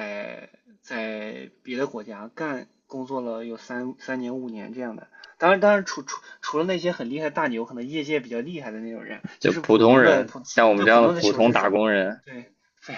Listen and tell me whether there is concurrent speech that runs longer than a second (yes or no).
yes